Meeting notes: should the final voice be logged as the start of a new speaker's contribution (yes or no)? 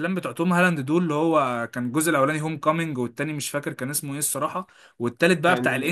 no